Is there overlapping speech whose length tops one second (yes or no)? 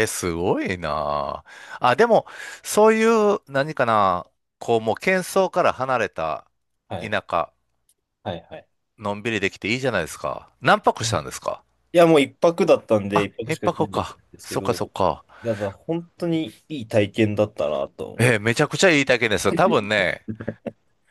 yes